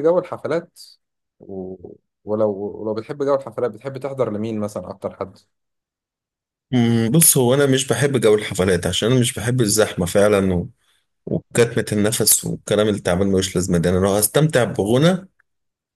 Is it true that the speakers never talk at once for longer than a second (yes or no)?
yes